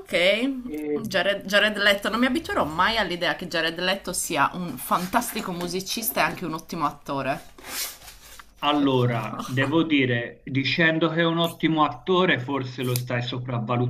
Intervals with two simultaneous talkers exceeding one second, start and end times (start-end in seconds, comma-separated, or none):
none